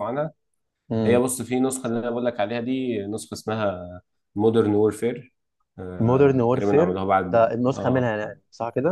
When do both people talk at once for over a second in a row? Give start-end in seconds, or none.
6.1-8.1